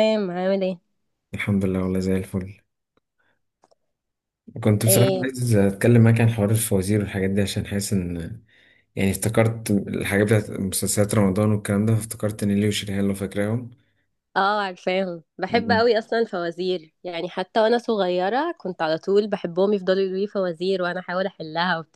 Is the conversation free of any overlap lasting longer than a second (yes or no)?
yes